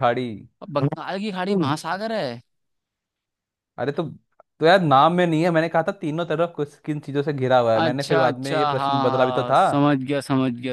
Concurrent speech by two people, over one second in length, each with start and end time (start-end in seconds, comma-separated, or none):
7.8-9.6